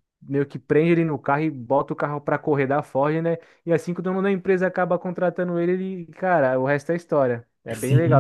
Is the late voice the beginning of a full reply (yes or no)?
yes